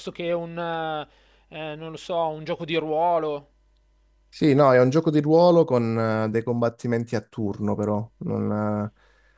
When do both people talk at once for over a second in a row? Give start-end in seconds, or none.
none